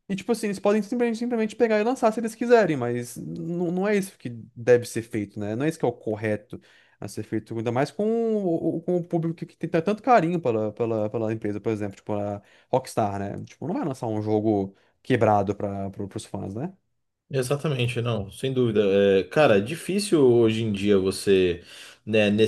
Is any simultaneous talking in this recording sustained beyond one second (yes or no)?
no